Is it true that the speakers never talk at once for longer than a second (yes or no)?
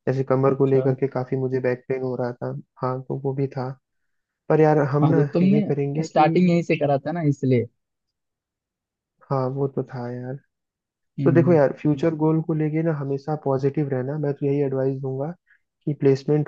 no